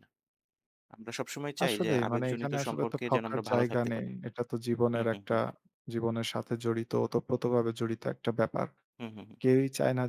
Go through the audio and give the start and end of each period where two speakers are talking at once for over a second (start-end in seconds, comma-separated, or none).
1.6-4.1